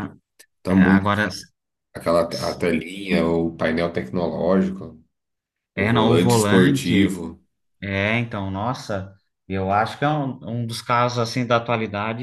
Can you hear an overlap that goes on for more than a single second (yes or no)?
yes